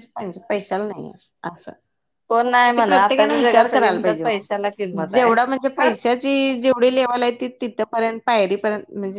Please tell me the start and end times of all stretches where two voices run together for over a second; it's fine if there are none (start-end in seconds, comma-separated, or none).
2.8-5.3